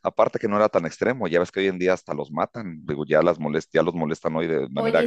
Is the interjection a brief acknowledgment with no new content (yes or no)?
no